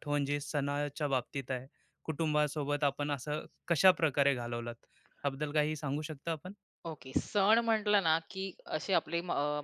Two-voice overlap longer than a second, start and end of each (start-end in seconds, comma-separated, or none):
none